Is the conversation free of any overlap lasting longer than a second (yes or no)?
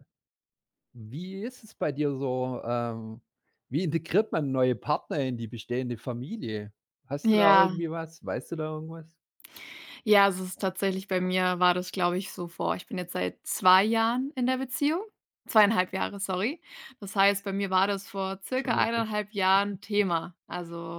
yes